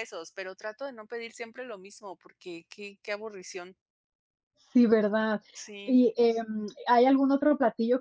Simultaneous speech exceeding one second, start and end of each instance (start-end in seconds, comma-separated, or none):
none